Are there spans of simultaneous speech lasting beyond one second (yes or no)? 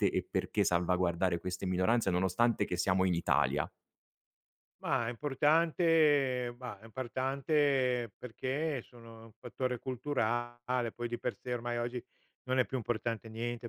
no